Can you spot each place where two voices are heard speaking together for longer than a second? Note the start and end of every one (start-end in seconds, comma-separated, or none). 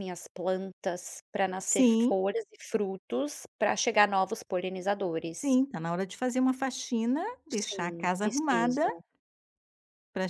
7.6-8.8